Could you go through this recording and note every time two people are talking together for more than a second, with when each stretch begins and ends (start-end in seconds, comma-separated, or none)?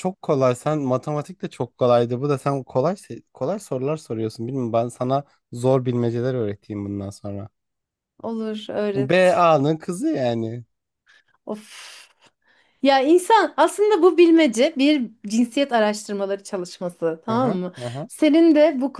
none